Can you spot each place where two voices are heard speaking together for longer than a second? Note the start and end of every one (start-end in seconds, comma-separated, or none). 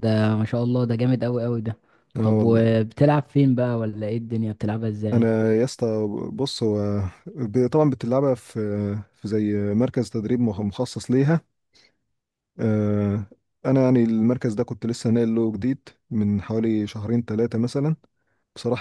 none